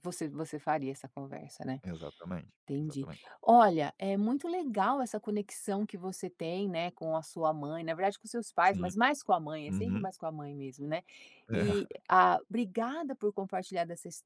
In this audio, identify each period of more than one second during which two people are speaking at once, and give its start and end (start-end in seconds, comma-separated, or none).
none